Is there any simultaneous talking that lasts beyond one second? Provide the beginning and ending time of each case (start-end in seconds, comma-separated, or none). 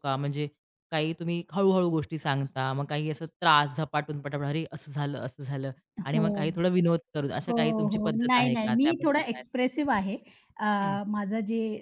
7.5-9.4